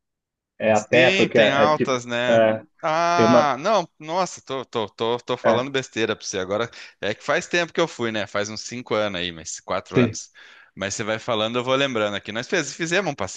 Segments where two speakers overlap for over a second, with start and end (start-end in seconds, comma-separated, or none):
0.7-2.4